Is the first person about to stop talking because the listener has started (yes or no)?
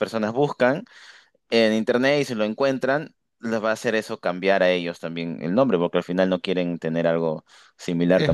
no